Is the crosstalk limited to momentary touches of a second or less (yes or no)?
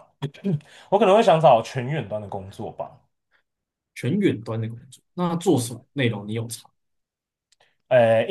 yes